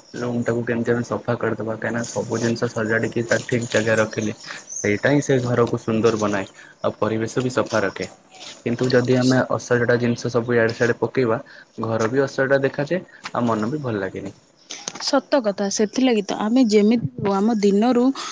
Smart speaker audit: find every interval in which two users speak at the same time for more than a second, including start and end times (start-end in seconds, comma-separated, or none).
none